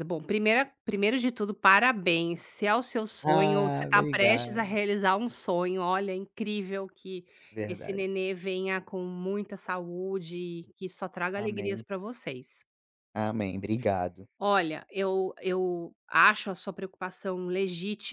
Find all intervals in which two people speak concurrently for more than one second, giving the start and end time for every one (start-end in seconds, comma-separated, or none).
3.2-4.7